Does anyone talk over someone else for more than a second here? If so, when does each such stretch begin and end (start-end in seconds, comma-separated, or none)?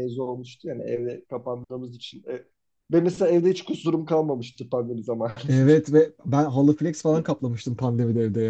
none